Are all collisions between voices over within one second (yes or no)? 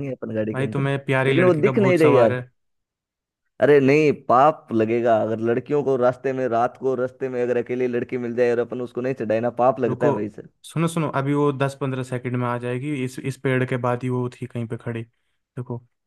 no